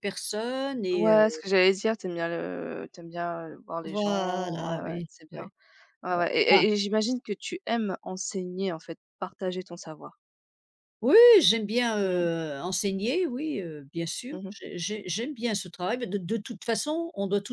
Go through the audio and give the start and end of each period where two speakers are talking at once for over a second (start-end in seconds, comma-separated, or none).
3.8-5.5